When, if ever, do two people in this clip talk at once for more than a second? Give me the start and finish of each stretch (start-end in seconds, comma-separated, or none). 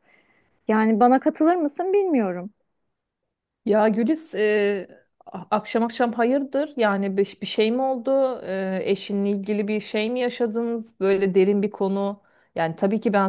none